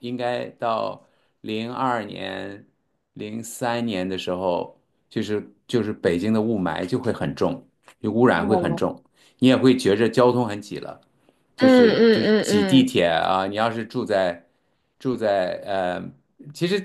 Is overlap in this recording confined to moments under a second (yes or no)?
no